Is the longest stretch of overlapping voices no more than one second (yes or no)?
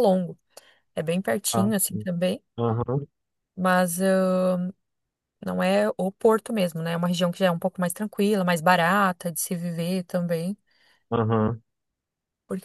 yes